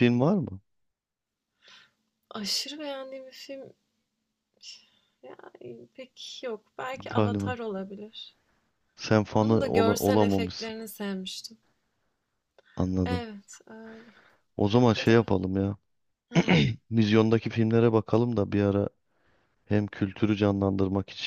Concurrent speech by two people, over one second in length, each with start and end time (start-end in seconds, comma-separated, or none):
9.3-10.7